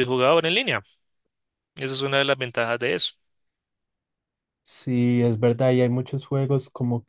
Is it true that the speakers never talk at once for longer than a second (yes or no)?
yes